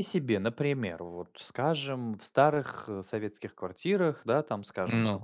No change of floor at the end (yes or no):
yes